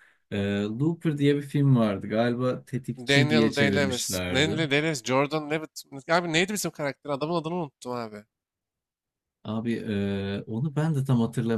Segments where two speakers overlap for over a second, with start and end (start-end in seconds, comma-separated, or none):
3.1-4.6